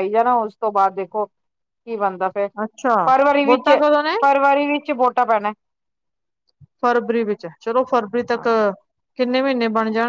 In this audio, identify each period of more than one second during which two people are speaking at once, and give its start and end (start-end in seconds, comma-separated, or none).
none